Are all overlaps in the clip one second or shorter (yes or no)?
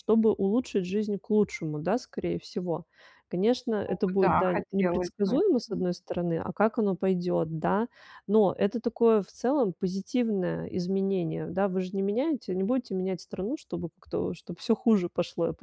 no